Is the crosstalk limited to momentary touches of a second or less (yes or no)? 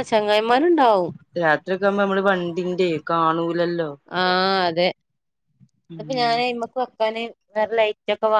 yes